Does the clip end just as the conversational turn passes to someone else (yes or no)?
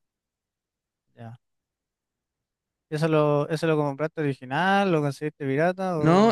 yes